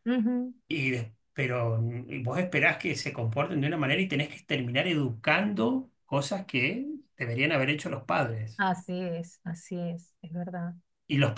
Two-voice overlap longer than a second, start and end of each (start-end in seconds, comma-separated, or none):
none